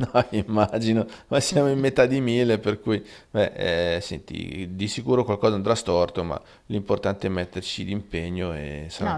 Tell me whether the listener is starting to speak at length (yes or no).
yes